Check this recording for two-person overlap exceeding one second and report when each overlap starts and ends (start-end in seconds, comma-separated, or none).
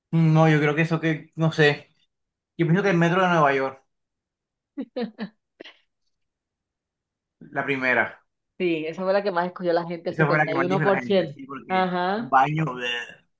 10.1-12.3